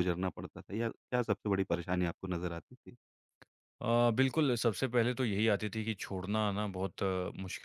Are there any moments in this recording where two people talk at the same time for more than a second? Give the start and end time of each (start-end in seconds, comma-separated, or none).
none